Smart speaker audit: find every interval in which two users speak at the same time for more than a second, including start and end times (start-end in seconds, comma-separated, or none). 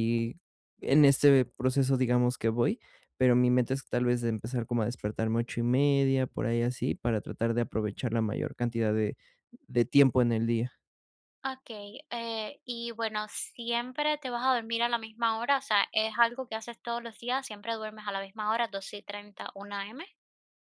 none